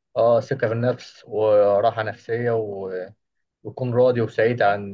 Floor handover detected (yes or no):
no